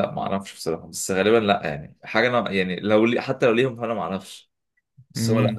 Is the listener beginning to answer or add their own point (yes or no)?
yes